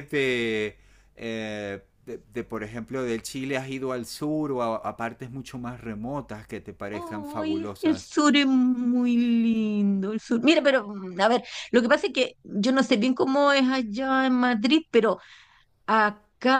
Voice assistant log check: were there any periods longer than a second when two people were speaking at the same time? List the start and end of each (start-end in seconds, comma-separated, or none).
6.9-8.1